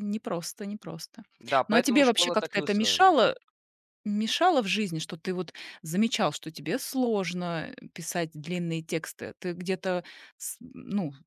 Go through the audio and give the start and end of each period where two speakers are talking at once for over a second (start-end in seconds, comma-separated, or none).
1.7-3.1